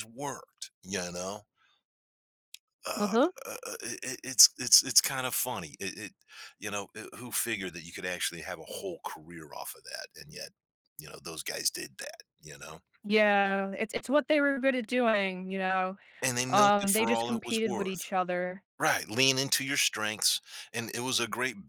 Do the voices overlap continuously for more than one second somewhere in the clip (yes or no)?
yes